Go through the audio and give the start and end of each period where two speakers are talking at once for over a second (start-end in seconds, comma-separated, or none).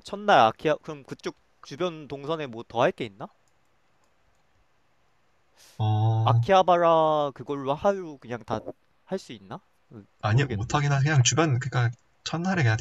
none